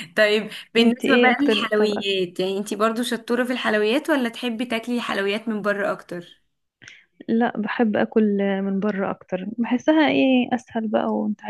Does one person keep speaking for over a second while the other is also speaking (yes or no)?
yes